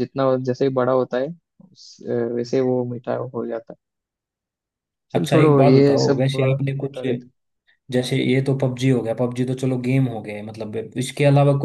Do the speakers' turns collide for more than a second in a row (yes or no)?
yes